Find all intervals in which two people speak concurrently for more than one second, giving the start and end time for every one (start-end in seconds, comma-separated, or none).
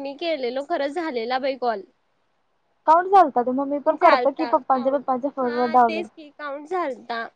3.9-6.0